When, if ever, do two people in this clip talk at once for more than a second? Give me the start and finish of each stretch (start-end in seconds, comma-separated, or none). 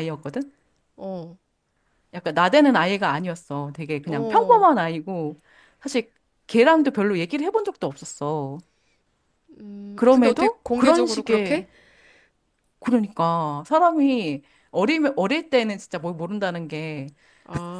9.9-11.7